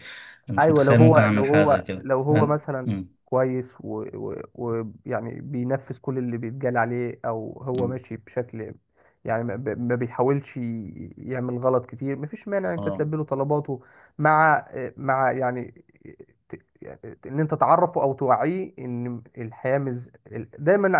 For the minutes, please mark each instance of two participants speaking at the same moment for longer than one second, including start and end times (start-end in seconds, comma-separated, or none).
0.6-2.7